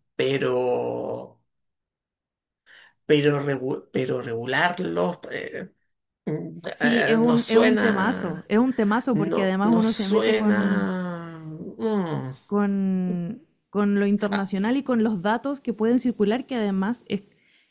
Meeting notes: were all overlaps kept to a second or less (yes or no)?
no